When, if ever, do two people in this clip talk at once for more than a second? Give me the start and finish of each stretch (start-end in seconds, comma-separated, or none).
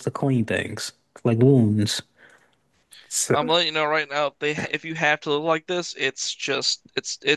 none